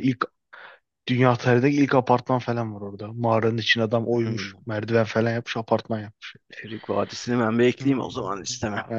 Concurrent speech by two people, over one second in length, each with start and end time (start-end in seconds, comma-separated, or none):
none